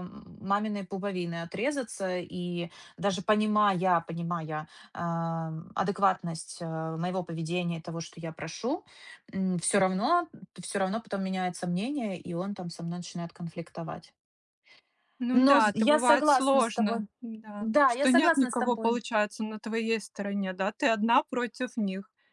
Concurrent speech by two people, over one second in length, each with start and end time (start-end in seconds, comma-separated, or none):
15.5-17.0, 17.6-19.0